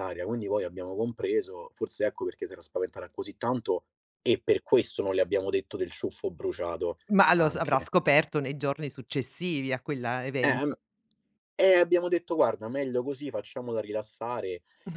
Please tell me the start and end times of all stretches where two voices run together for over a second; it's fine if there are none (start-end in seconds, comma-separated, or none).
none